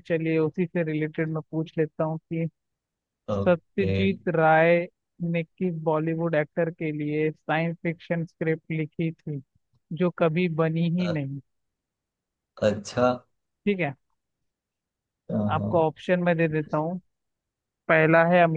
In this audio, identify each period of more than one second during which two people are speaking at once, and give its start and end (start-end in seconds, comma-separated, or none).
none